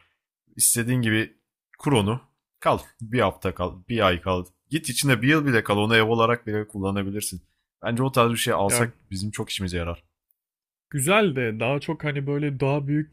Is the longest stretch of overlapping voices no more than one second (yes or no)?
yes